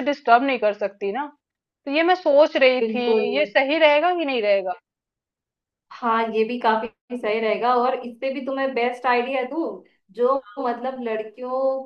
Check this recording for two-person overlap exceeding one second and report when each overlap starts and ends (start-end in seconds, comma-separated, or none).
none